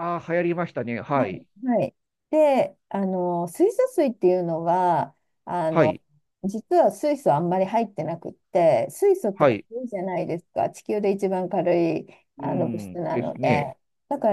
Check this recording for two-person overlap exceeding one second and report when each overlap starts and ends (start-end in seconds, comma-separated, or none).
12.4-13.6